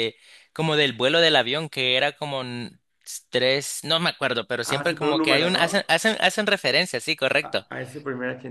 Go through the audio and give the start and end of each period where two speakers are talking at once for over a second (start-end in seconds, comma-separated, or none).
4.6-5.9